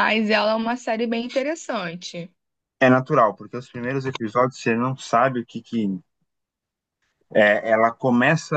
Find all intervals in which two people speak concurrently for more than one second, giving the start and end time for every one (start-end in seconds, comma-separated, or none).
none